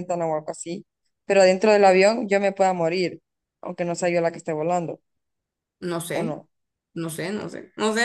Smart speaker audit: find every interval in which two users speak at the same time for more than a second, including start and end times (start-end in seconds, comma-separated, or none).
none